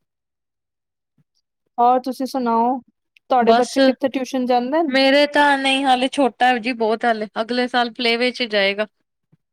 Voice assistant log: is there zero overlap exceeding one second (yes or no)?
yes